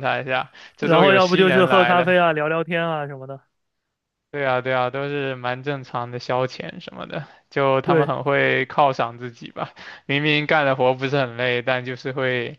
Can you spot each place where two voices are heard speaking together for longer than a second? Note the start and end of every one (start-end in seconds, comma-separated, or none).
0.8-2.1